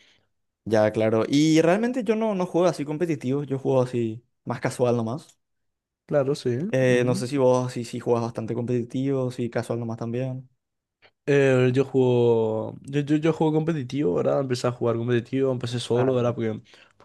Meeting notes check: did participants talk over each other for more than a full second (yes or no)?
no